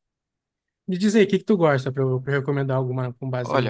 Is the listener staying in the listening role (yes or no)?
no